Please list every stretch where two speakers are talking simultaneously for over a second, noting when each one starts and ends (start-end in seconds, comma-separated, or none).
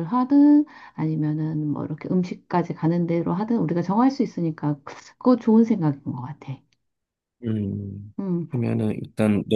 none